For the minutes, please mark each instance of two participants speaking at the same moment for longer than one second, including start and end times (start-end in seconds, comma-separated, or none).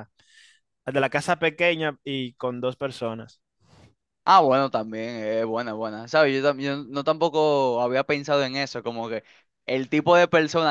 none